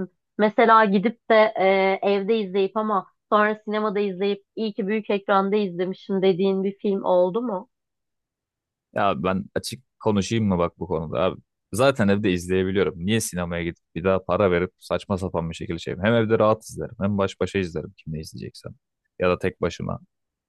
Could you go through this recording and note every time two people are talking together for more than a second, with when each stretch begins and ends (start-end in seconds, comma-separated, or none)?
none